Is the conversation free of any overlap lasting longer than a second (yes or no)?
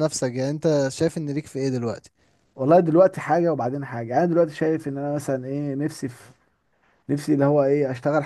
yes